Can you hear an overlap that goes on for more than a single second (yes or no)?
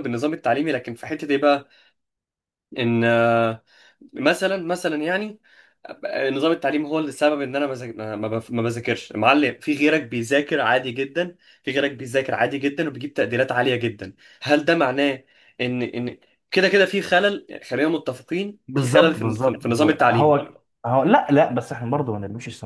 yes